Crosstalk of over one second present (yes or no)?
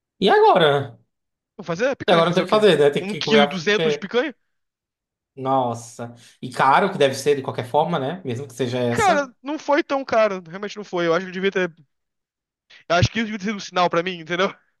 yes